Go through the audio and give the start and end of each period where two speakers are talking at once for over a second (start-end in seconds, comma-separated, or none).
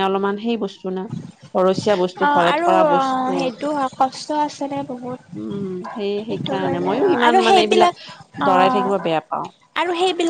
6.3-8.0